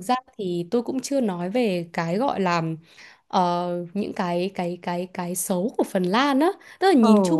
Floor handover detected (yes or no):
no